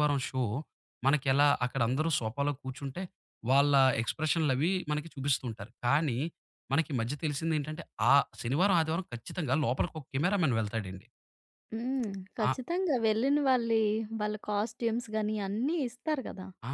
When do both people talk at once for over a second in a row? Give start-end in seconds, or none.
none